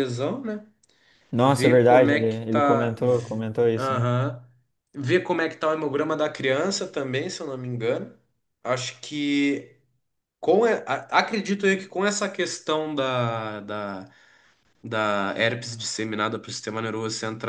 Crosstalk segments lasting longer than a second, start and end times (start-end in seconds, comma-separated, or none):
1.4-4.0